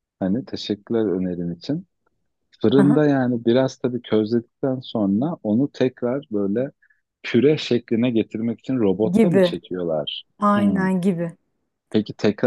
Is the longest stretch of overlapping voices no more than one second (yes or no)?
yes